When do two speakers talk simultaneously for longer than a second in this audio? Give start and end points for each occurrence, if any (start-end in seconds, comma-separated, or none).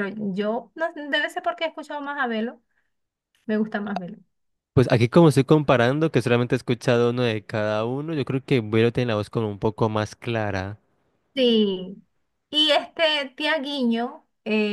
none